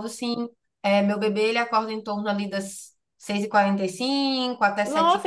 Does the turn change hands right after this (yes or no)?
yes